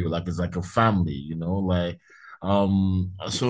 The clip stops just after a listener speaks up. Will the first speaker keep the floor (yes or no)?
yes